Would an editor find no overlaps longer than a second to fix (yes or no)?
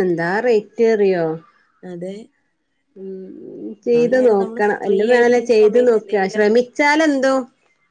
no